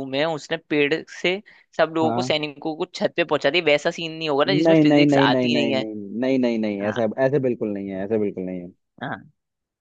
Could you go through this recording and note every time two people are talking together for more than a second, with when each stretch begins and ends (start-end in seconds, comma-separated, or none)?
4.5-5.8